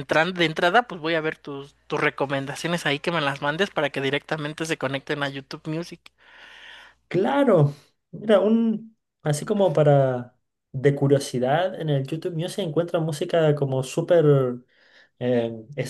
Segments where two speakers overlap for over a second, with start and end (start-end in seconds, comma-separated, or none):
none